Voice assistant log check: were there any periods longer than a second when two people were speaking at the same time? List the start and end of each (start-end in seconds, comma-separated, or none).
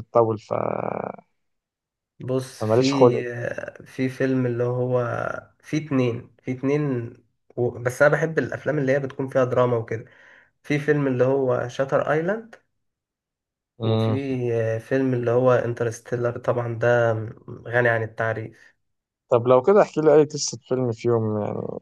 none